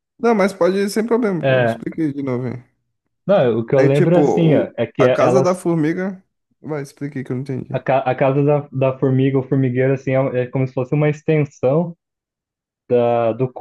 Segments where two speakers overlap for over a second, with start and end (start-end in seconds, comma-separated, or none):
3.8-5.6